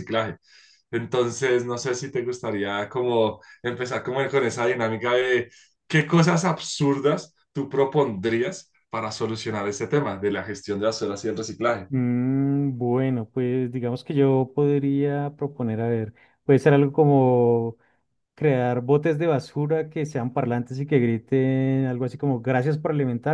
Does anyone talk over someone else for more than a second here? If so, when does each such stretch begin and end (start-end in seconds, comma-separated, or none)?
none